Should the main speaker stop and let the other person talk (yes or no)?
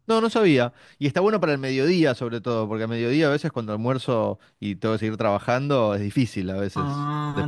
yes